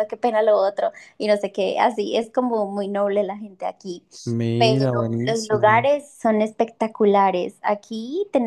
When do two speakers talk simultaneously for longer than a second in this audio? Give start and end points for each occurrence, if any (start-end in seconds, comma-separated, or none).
4.6-5.9